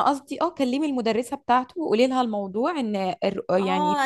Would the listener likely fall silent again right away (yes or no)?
no